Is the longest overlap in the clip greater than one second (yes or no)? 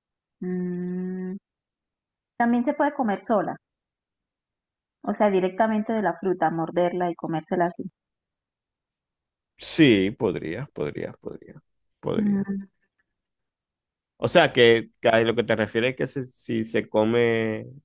no